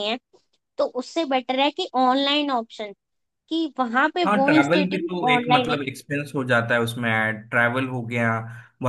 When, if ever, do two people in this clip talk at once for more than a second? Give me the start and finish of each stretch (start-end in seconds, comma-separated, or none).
4.3-5.8